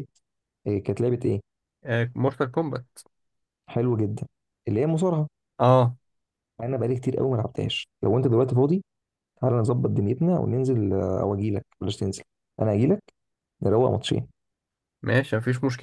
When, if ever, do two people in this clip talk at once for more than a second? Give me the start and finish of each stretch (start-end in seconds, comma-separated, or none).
none